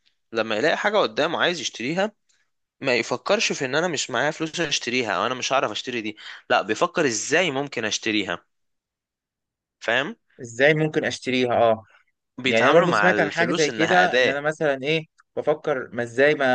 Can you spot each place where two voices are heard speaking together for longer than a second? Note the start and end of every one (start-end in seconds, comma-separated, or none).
12.4-14.4